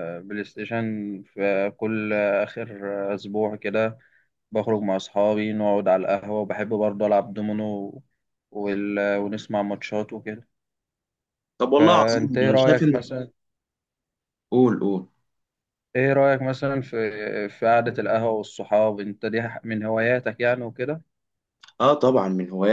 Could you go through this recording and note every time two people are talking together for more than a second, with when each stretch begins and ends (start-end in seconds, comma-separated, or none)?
11.8-13.0